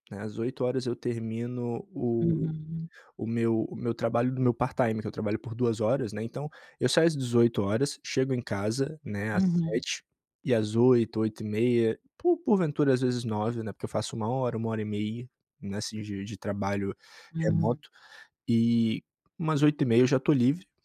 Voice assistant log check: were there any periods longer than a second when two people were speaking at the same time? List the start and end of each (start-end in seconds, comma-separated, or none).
none